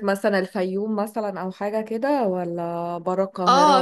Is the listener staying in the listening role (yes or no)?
no